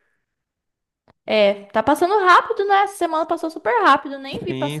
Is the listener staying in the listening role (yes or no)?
no